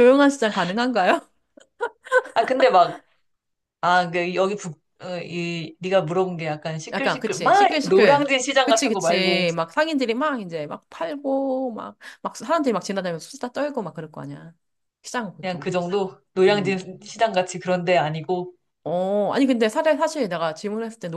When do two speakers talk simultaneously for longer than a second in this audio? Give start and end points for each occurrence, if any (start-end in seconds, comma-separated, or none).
6.9-9.4